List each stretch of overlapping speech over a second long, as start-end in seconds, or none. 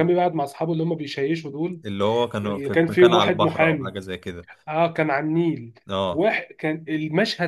2.4-3.9